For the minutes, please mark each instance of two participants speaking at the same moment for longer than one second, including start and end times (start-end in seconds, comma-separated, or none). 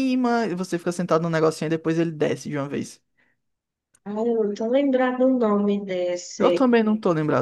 none